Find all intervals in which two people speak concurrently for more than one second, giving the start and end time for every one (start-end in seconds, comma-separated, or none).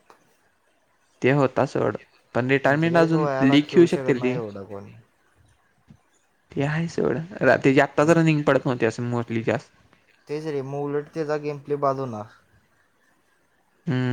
2.6-4.4